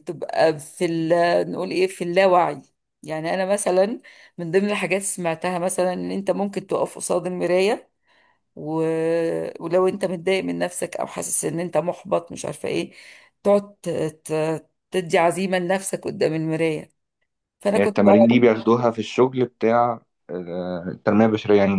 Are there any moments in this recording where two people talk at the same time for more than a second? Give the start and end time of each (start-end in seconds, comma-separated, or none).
none